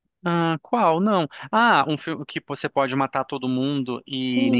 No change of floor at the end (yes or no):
no